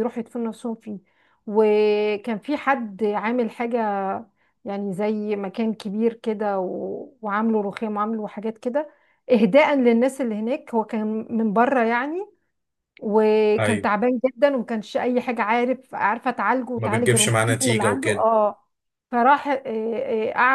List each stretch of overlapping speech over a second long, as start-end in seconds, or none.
16.8-18.3